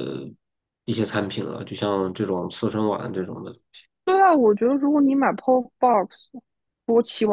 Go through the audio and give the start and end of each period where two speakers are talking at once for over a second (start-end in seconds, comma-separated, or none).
none